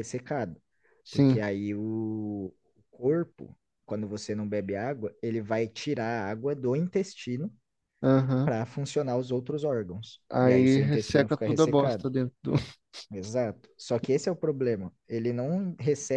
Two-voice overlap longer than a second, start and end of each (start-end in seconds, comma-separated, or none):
10.3-12.1